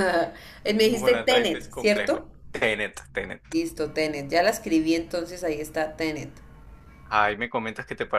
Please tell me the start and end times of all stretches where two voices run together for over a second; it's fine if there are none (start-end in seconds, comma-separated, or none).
0.8-2.3